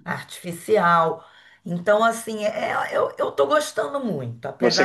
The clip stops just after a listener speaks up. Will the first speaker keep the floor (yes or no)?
no